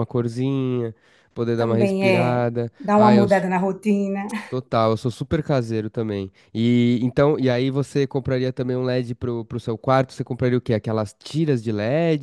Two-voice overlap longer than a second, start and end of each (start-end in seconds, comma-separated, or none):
1.6-3.2